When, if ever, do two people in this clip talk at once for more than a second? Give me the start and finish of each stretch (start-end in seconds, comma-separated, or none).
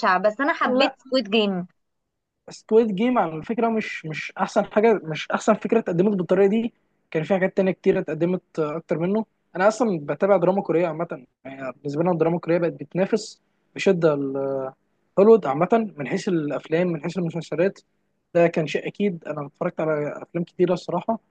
none